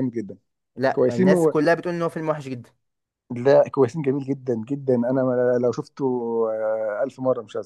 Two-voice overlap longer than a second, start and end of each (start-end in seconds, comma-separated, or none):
none